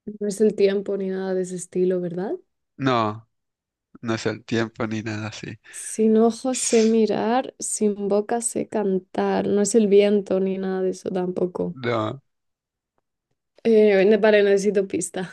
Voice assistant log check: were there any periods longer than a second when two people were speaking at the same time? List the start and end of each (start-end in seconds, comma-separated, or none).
none